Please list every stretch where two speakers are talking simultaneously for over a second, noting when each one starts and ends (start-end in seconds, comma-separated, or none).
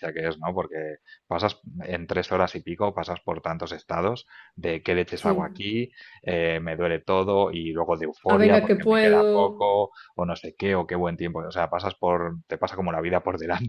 8.3-9.7